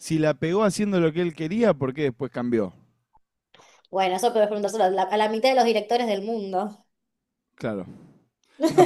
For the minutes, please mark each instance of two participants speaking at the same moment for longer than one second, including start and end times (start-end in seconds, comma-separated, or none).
none